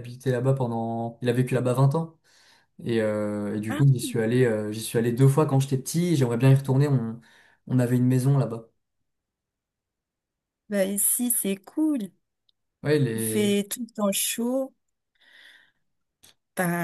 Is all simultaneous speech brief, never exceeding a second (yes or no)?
yes